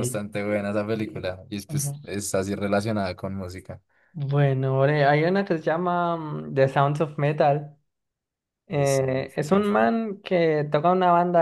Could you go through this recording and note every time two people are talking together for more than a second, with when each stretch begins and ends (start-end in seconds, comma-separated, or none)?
8.7-9.9